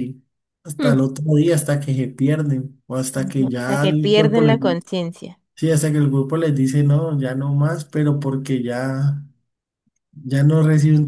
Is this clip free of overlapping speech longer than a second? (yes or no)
no